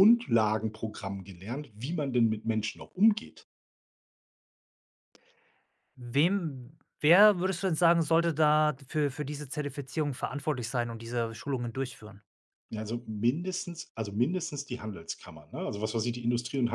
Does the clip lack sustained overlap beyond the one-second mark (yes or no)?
yes